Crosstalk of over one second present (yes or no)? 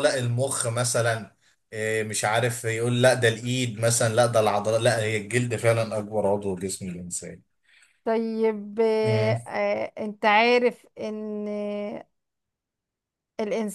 no